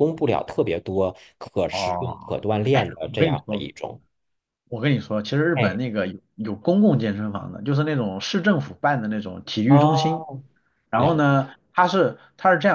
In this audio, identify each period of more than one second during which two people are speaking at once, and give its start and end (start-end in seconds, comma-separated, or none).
1.7-3.6